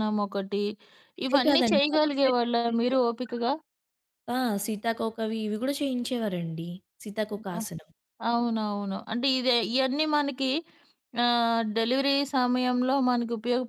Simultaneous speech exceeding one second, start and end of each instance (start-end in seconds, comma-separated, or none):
1.3-3.1